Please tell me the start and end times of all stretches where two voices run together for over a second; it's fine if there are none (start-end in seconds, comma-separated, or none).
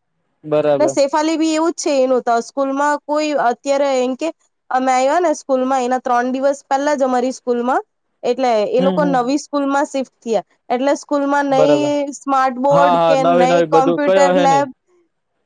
12.7-14.6